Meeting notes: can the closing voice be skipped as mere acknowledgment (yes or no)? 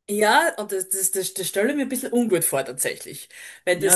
no